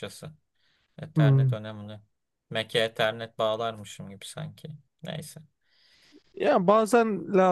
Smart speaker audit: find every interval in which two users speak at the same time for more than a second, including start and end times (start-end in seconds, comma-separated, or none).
none